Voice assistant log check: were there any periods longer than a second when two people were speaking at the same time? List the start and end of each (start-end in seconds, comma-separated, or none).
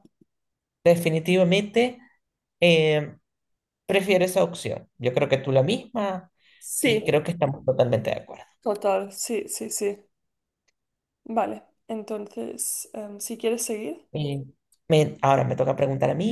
none